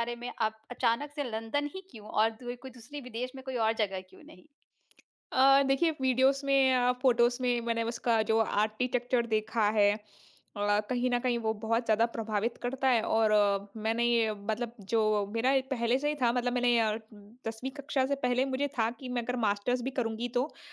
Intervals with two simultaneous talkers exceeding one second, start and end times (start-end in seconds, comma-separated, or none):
none